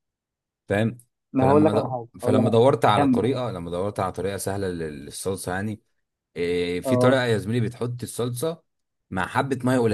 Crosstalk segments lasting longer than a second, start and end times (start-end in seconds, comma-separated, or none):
1.4-3.4